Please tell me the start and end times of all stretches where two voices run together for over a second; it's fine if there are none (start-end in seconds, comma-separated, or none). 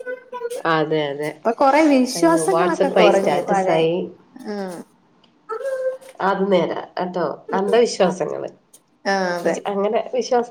2.2-3.8